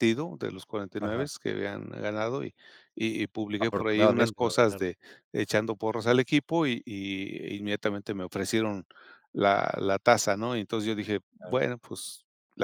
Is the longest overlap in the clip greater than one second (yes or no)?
yes